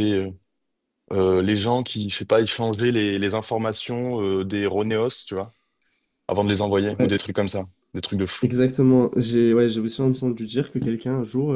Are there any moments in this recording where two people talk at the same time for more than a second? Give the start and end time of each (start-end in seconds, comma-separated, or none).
none